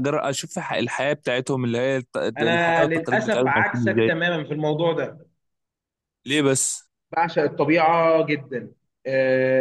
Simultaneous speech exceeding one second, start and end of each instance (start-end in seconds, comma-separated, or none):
2.4-4.1